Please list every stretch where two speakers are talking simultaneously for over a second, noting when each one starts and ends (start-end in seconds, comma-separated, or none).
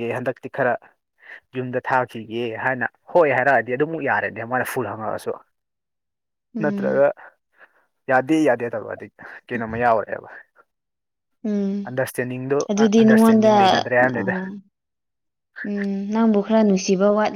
13.0-14.2